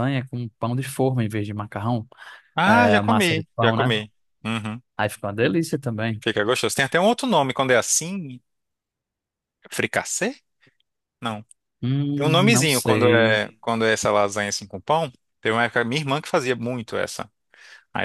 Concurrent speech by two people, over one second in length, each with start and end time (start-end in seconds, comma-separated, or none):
2.6-4.0, 12.2-13.4